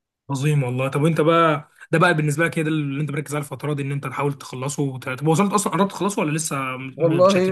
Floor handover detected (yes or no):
yes